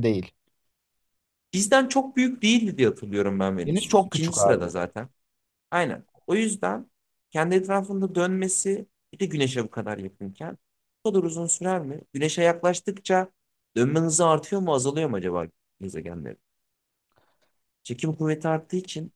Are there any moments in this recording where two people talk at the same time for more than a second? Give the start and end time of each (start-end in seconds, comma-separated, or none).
3.7-4.9